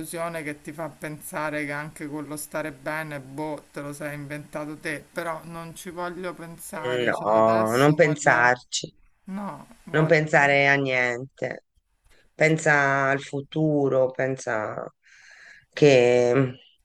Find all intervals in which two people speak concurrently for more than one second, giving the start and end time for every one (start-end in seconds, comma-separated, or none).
7.0-8.6